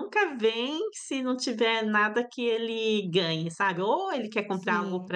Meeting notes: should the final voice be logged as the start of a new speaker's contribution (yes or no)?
no